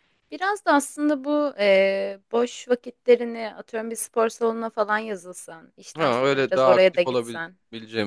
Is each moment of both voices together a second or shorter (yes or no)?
no